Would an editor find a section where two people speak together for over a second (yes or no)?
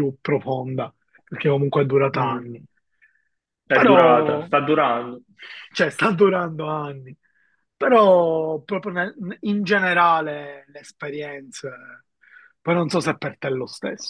no